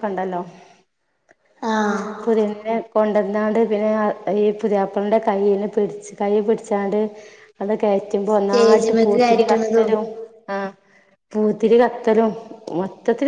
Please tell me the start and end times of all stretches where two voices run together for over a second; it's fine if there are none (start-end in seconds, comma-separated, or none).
8.3-9.9